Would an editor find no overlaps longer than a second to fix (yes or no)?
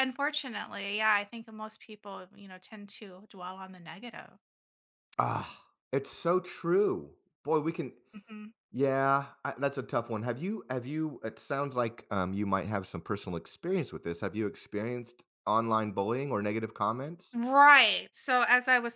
yes